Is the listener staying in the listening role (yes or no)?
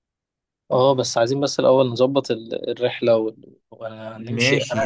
no